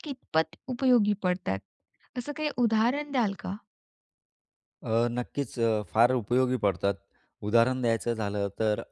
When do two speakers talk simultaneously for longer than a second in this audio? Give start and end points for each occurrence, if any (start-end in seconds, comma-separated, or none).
none